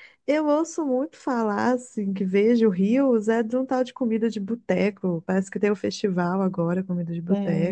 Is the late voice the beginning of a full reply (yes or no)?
yes